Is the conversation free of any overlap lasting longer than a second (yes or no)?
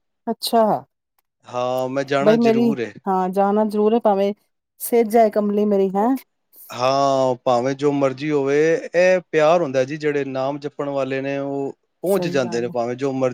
yes